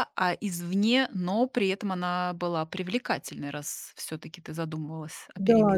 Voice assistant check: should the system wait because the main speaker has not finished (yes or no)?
no